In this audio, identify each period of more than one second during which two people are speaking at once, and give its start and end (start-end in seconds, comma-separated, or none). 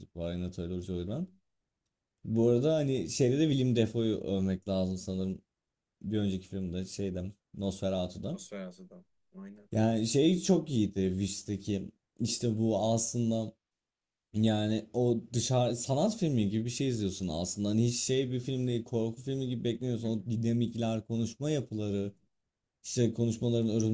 none